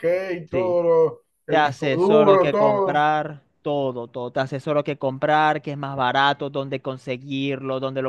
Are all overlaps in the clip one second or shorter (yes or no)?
no